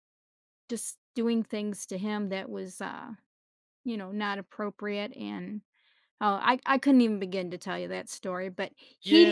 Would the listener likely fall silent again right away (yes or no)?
no